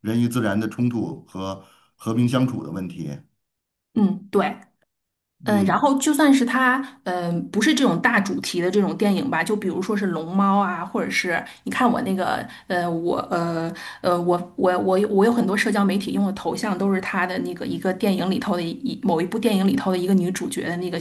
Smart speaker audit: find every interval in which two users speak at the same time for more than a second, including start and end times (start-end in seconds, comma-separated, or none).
none